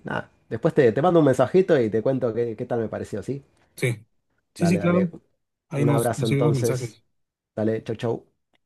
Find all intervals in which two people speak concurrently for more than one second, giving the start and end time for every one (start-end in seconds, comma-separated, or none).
5.8-7.0